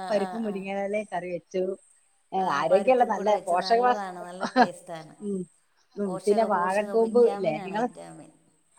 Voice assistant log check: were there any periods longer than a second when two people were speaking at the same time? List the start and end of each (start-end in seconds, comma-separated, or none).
6.0-7.9